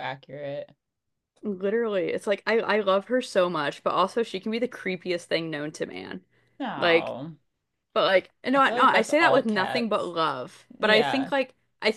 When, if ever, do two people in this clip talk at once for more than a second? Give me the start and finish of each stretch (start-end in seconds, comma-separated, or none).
8.6-10.1